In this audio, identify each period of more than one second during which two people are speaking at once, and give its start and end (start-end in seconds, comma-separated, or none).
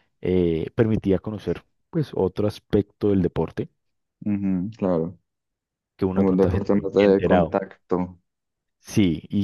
6.1-7.6